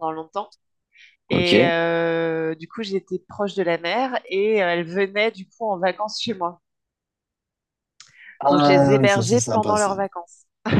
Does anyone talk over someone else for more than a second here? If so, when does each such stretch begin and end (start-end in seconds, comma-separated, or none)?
8.5-10.0